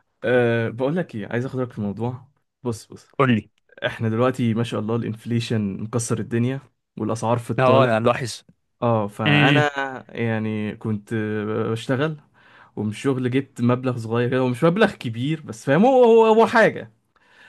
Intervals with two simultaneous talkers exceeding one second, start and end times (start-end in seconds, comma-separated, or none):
none